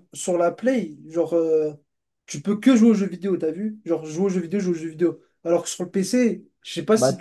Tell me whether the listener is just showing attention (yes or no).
yes